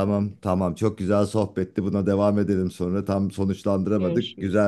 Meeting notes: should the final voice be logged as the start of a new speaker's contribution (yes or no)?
no